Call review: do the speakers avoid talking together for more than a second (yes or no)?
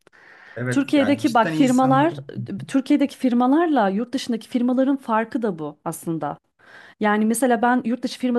no